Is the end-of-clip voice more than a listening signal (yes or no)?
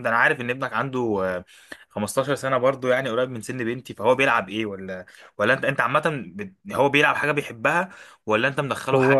yes